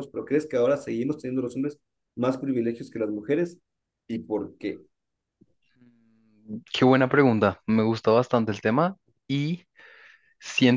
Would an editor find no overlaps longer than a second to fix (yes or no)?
yes